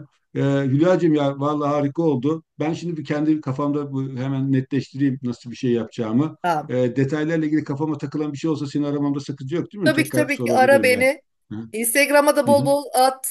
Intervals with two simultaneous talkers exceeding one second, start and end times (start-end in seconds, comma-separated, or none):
9.8-11.1